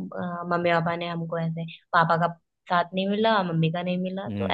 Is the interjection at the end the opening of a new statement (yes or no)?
yes